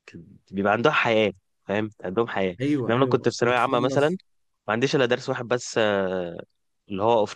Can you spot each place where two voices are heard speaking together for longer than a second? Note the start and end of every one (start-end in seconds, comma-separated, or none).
2.6-4.1